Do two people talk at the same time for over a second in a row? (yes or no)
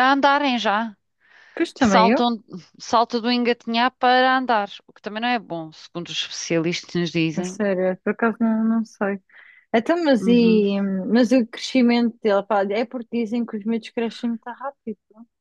no